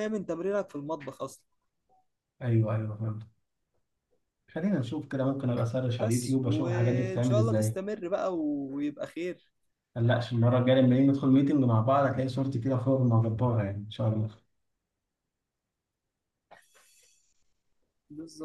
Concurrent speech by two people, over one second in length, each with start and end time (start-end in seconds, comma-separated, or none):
6.0-7.8